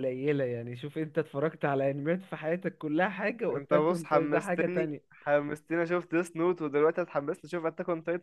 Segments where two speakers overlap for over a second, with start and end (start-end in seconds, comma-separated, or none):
3.5-5.0